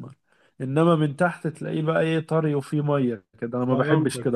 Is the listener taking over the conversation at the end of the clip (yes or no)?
yes